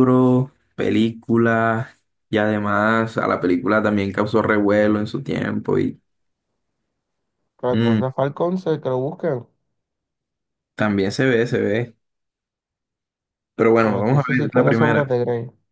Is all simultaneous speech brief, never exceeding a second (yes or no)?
no